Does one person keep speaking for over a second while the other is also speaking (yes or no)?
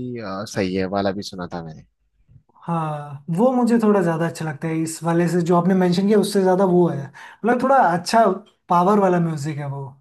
no